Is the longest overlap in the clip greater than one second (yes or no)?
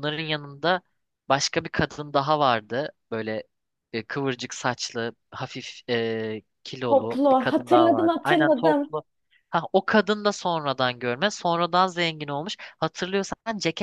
yes